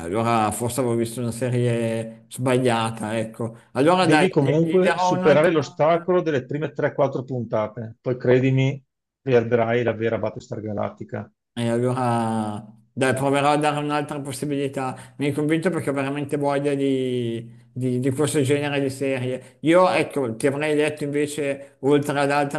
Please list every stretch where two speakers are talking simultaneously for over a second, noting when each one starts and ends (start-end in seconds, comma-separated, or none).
3.9-5.8